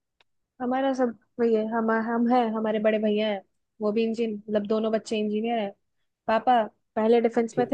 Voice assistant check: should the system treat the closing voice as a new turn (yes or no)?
no